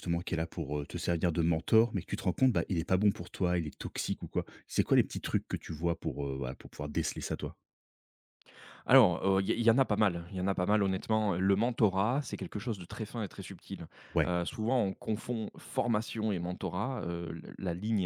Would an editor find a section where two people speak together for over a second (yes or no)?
no